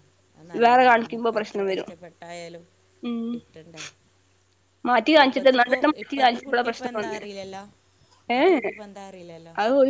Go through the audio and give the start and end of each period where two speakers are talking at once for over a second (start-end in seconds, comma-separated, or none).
5.2-7.2